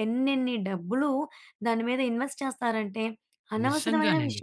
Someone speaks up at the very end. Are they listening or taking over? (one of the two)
listening